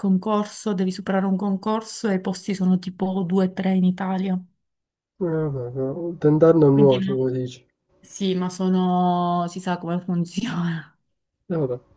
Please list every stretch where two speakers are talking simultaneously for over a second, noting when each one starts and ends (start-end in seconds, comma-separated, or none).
none